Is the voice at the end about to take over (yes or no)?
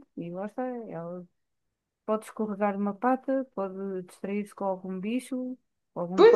no